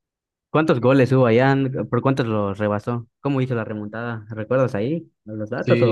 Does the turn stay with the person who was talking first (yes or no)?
no